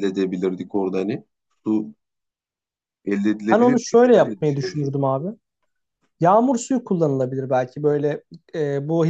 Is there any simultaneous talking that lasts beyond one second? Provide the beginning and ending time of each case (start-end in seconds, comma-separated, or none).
3.5-5.0